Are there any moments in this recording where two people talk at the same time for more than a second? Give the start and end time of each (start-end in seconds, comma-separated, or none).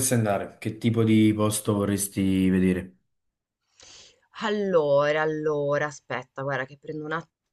none